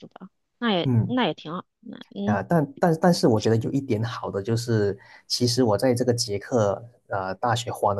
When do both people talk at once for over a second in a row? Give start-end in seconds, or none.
none